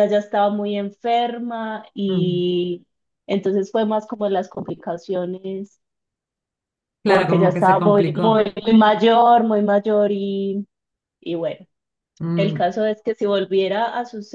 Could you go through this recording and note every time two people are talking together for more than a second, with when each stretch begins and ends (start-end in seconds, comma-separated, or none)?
7.0-8.5